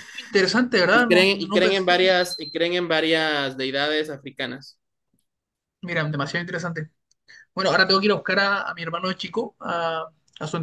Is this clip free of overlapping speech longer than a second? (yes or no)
no